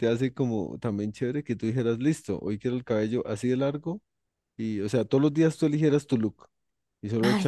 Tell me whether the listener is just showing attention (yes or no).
yes